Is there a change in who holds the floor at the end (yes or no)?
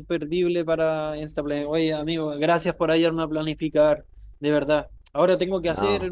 no